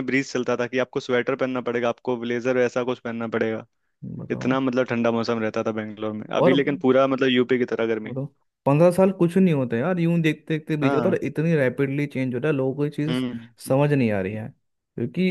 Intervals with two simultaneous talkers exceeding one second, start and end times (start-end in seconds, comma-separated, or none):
none